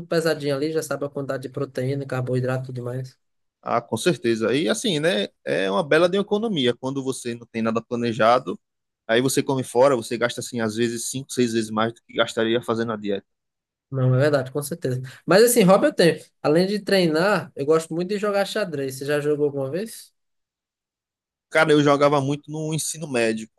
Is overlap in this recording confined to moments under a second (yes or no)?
yes